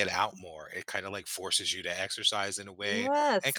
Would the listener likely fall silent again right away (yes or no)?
yes